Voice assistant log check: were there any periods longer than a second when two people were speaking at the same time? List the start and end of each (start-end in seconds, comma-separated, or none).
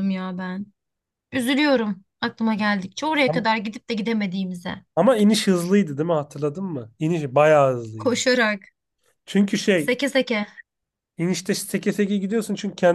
none